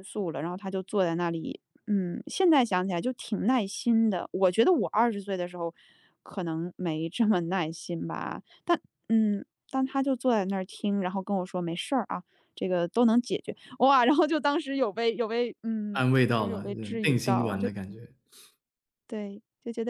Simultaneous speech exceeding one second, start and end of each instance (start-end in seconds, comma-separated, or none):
15.9-17.7